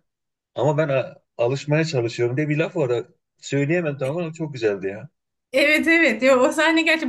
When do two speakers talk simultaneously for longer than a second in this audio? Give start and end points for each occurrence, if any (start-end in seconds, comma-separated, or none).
none